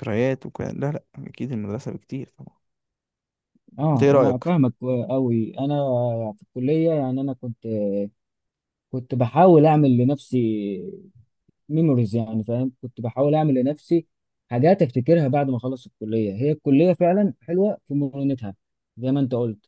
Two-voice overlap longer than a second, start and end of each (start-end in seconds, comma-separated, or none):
none